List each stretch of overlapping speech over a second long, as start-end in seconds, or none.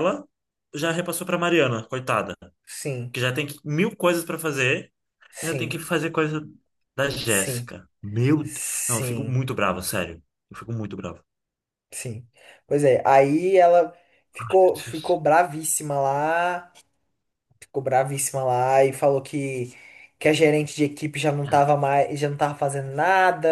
none